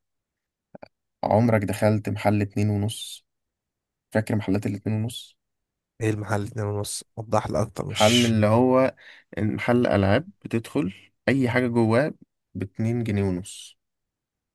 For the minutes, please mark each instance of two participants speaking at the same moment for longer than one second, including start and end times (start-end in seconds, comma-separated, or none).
none